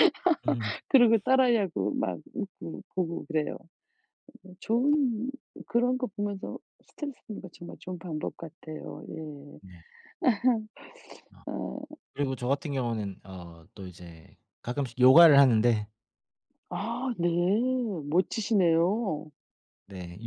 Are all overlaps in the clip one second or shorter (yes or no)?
yes